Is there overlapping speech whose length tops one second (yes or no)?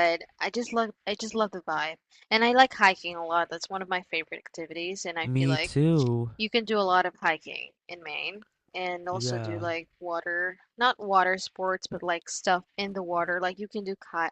no